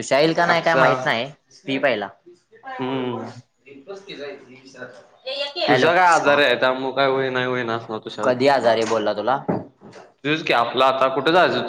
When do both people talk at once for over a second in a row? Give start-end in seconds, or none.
none